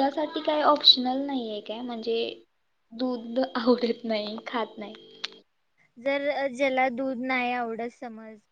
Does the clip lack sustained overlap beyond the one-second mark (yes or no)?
yes